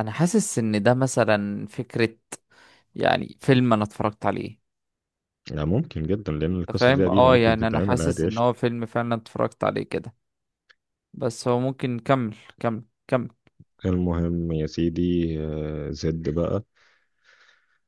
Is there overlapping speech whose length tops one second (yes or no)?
yes